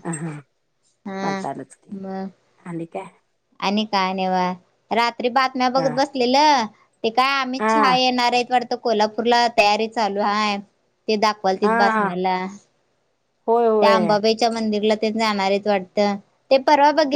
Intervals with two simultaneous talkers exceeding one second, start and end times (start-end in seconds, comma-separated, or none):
none